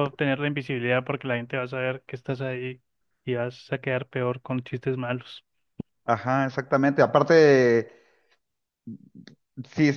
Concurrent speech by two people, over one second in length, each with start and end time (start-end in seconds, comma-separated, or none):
none